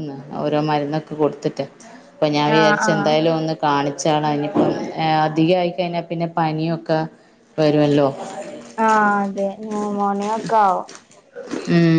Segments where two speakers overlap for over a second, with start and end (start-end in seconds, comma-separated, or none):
none